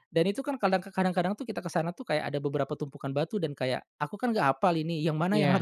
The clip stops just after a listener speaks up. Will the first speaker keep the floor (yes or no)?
yes